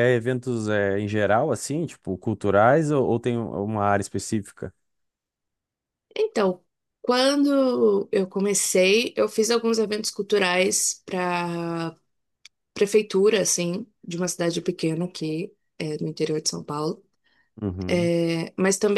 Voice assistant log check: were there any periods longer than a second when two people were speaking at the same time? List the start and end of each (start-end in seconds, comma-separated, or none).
none